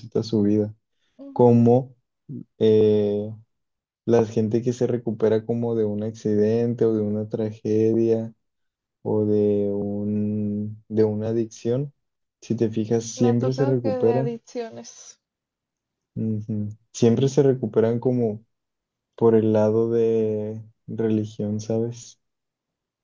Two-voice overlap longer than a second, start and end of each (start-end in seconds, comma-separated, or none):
13.2-14.4